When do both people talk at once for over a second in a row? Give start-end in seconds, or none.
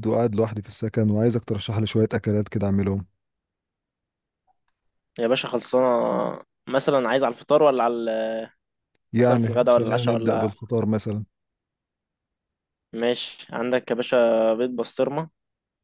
9.2-10.4